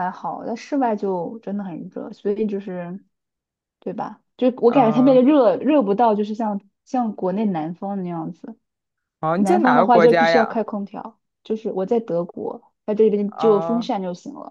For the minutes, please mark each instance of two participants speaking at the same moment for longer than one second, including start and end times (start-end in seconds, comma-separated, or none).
9.4-10.6